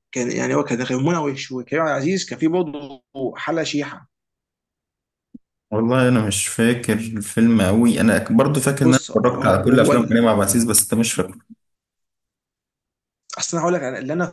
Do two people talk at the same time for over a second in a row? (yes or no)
yes